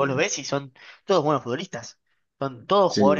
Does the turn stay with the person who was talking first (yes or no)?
yes